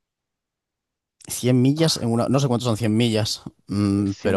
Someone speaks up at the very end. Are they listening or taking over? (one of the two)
taking over